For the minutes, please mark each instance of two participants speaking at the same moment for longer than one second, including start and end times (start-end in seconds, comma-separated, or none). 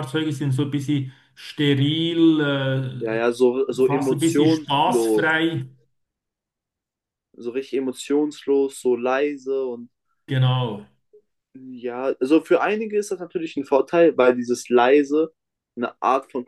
3.7-5.2